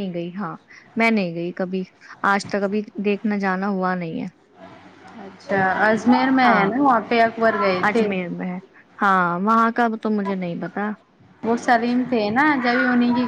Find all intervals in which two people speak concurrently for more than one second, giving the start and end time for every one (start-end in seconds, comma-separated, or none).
none